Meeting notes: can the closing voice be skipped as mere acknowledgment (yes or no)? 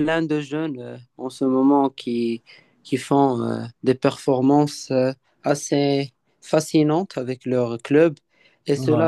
yes